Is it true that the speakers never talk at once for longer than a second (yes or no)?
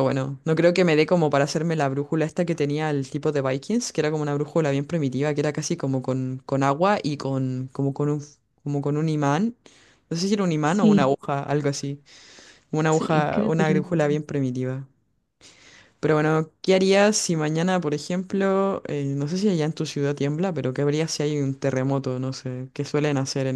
no